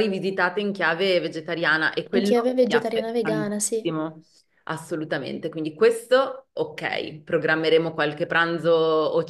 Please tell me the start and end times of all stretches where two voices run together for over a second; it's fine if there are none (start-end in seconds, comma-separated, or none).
2.2-3.9